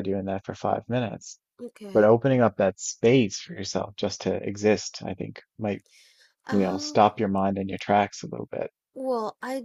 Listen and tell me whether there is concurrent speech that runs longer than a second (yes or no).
no